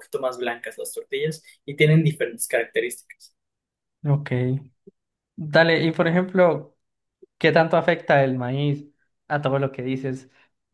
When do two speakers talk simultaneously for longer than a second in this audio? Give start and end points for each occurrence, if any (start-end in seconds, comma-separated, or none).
none